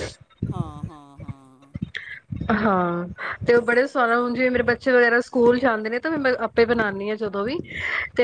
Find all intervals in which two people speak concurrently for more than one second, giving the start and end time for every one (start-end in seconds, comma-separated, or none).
none